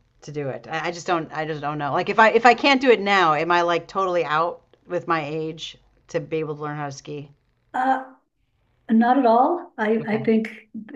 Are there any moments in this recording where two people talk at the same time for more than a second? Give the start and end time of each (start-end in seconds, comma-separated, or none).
none